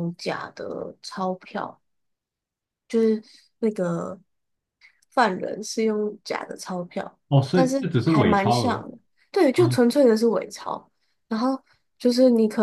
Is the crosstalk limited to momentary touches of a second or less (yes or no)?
no